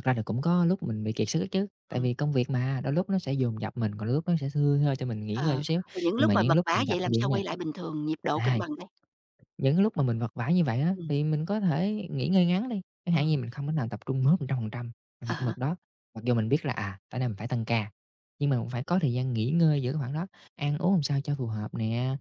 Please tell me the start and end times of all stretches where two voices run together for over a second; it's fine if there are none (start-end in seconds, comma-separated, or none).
5.3-7.4